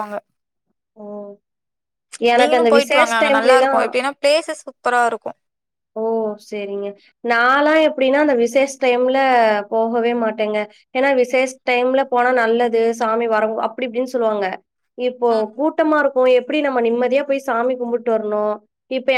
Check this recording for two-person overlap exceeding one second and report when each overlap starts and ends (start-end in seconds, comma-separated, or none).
2.4-3.8